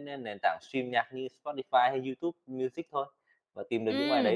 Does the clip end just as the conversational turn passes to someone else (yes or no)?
yes